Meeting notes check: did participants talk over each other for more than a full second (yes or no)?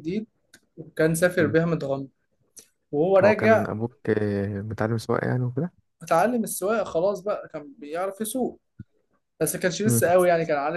no